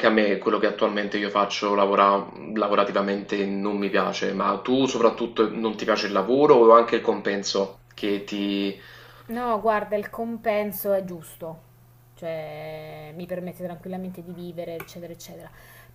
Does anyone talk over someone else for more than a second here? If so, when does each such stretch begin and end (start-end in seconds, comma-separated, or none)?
none